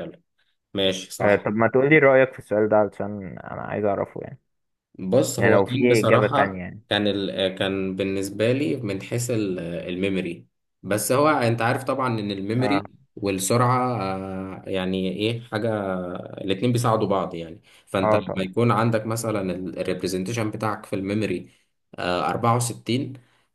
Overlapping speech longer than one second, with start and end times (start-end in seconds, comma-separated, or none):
5.4-6.8